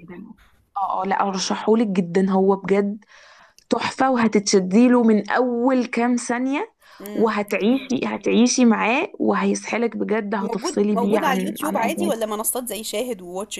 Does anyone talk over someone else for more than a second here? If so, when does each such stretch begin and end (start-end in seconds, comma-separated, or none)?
10.4-12.1